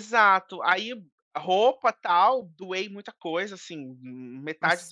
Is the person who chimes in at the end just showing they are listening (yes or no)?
yes